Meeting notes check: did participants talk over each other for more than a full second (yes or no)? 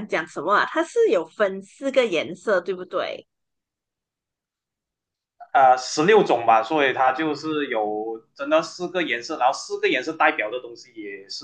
no